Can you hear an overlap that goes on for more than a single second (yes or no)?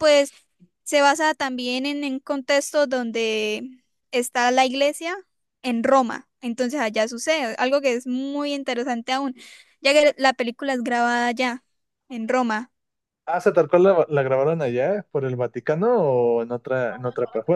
no